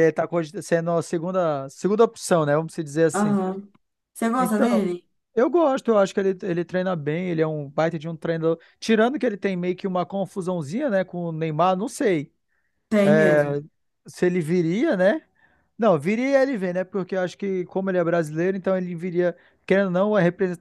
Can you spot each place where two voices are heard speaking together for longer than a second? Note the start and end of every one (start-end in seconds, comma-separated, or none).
none